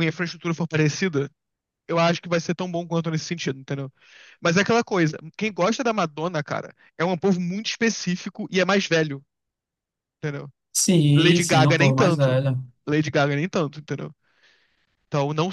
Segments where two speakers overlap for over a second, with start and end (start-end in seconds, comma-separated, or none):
11.1-12.4